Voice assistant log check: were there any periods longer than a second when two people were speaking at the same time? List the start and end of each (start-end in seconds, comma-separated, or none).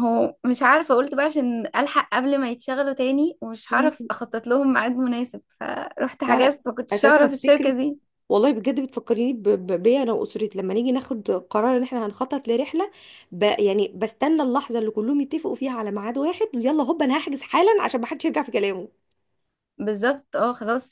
6.3-7.7